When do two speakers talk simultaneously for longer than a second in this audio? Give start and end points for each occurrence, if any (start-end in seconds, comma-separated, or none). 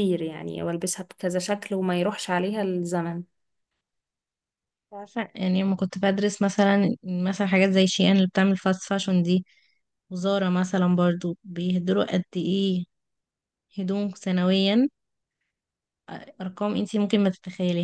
none